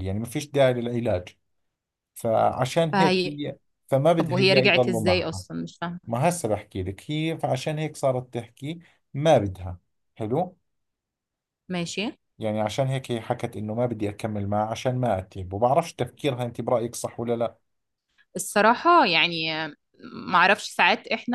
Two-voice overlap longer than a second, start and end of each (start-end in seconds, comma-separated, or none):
4.2-5.4